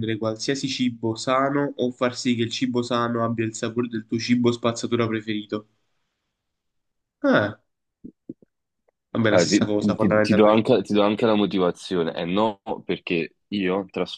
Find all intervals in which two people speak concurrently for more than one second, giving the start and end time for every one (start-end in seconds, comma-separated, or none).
9.3-10.6